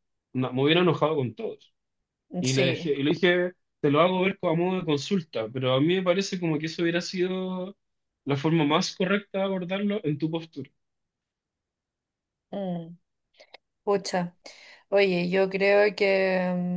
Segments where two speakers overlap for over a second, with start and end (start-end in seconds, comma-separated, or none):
none